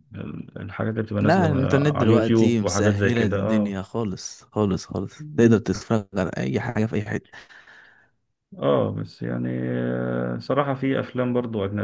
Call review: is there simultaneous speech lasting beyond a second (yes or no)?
yes